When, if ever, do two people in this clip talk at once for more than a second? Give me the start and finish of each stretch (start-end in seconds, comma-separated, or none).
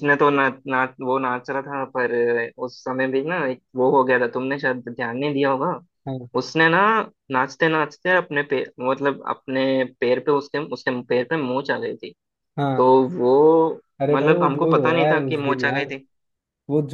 14.0-15.9